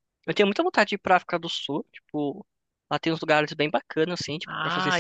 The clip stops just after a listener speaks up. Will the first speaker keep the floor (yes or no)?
no